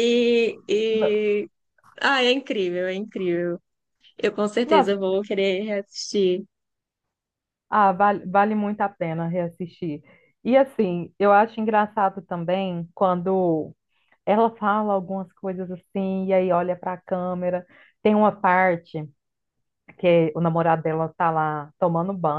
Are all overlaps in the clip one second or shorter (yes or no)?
yes